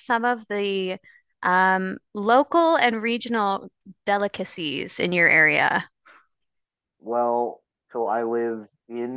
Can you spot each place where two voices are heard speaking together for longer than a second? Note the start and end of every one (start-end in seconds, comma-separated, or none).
none